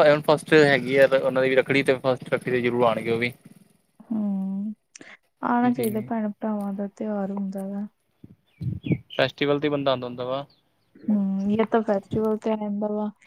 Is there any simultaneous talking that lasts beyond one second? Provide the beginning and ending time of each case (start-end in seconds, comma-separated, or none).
none